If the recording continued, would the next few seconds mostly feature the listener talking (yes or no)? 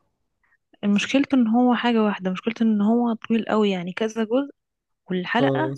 no